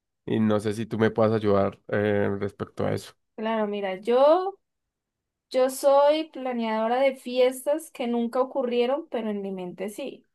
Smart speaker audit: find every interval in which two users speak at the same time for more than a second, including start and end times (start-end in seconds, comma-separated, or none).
none